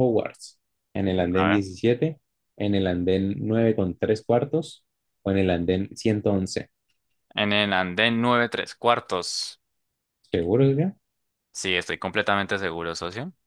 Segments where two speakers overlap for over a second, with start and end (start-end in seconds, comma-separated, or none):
none